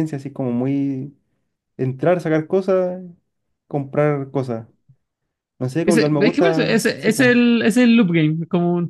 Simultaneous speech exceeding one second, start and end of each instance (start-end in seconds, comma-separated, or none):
5.8-7.3